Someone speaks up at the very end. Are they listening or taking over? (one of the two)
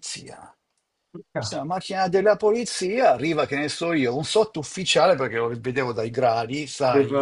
listening